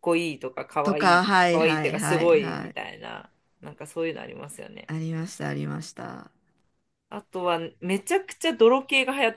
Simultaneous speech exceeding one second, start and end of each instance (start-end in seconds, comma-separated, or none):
0.8-2.8